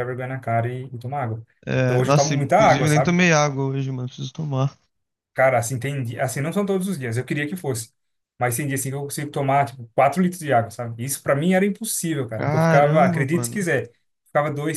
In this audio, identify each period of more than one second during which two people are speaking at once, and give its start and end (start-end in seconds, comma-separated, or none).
1.8-3.2, 12.4-13.6